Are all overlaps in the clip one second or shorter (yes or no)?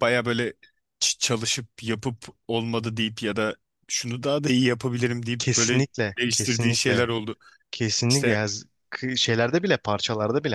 no